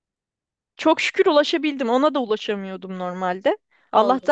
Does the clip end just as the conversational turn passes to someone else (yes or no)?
no